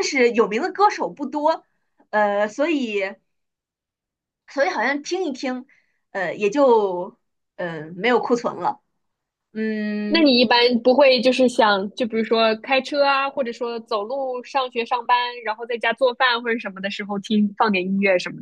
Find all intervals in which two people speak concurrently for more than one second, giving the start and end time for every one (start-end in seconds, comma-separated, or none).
none